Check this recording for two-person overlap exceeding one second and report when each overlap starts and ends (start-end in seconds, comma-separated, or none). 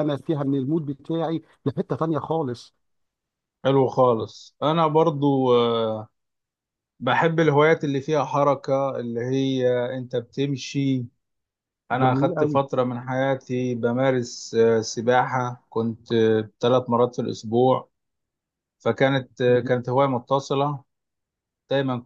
none